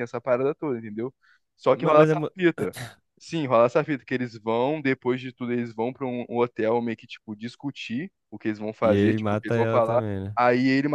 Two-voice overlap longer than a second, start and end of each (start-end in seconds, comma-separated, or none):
8.8-10.4